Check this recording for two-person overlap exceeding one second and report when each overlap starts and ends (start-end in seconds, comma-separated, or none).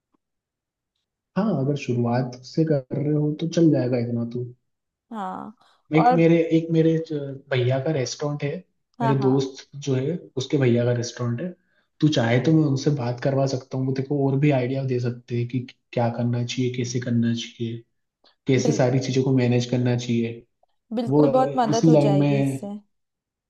21.1-22.7